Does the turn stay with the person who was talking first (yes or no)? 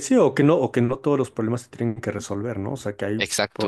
yes